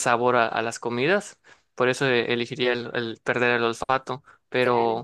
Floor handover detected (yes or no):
no